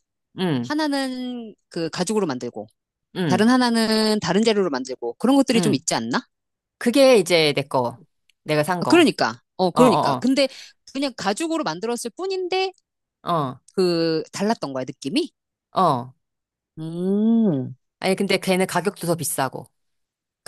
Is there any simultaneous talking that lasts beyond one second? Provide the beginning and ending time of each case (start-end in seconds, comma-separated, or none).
none